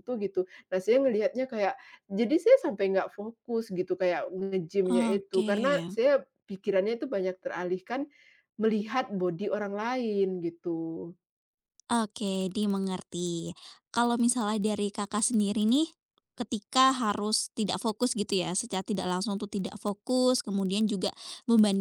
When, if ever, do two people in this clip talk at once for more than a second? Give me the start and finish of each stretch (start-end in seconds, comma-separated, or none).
none